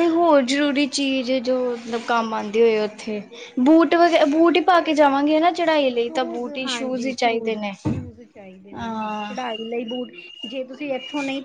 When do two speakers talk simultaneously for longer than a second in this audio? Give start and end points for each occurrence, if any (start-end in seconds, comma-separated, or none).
6.0-7.7